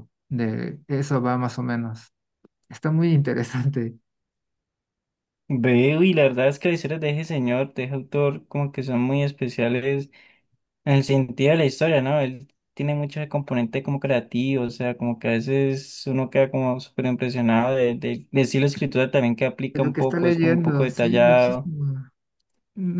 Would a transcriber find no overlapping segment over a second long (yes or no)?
no